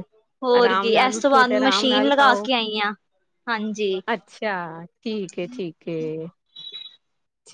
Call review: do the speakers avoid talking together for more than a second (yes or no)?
no